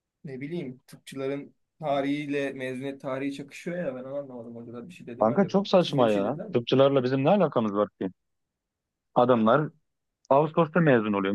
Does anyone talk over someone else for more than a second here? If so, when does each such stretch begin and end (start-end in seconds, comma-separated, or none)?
5.2-6.6